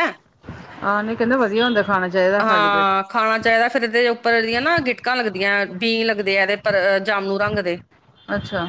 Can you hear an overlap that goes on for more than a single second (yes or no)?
no